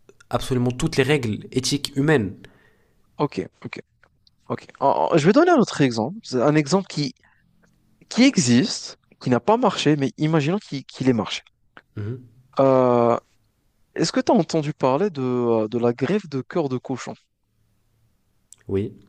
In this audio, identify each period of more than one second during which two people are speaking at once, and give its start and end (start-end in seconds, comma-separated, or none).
none